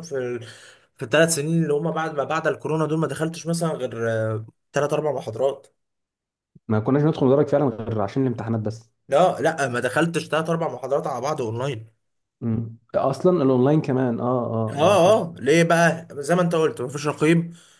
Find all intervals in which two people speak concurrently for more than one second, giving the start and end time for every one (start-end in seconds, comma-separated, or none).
none